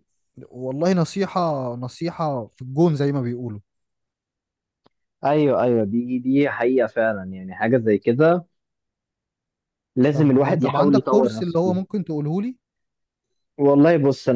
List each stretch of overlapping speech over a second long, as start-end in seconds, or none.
10.1-11.8